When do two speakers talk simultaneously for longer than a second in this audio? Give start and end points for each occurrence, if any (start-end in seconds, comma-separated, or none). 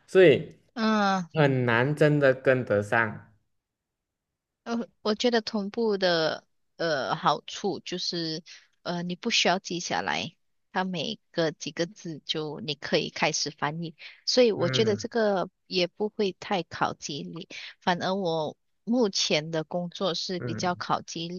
none